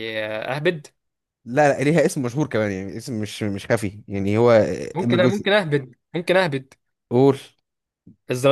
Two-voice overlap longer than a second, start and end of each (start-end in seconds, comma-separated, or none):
none